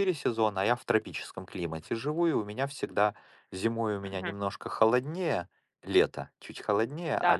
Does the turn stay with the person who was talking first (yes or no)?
no